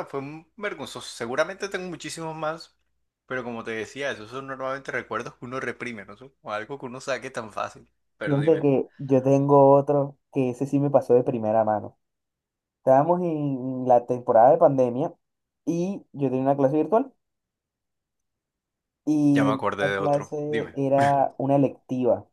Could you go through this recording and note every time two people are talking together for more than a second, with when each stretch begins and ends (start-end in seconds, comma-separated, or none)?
19.3-20.8